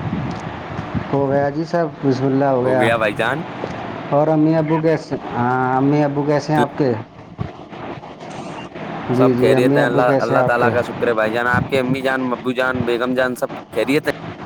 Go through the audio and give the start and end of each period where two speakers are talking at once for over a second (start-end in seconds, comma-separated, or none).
9.2-10.7